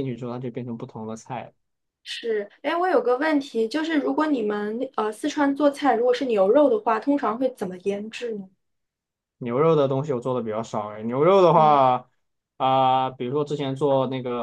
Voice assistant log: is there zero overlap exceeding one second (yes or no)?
yes